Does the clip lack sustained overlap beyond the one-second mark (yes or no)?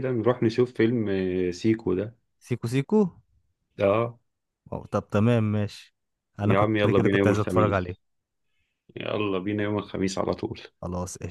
no